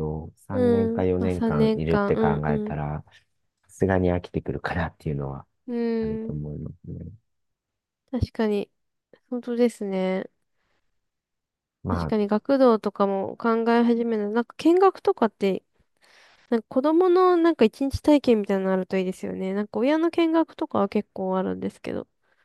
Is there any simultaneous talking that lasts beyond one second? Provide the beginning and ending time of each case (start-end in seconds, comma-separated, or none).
0.5-2.8